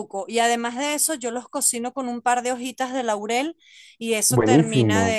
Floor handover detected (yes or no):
no